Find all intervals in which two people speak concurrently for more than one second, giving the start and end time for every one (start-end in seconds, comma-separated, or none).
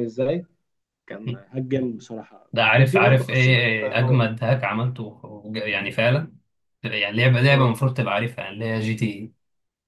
2.5-4.3